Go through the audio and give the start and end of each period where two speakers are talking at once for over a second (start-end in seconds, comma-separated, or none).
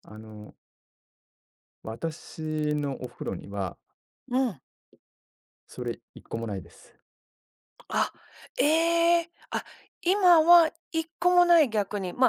none